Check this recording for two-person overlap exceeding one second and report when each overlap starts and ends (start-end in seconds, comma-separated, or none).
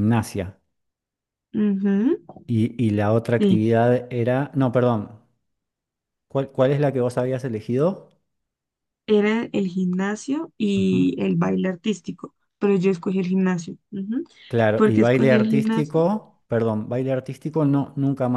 14.7-16.0